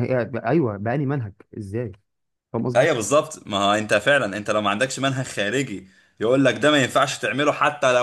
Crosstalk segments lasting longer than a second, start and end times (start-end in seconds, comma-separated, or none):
none